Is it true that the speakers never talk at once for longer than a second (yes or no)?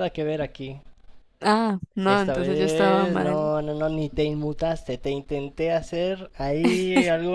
no